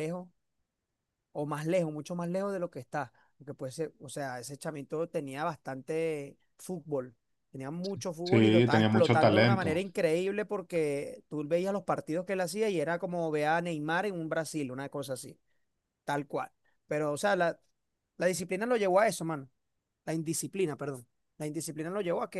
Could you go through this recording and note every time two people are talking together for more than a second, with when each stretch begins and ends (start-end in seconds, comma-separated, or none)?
8.2-9.8